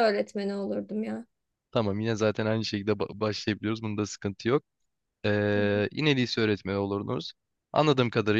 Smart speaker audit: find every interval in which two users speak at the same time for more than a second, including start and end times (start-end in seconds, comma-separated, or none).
none